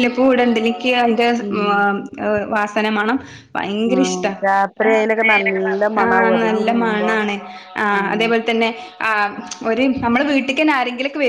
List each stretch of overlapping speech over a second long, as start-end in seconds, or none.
5.0-7.1